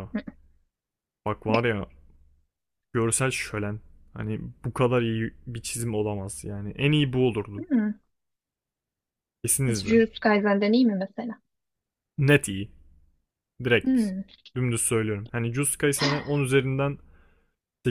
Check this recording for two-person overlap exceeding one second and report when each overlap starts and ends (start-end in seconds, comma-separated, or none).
none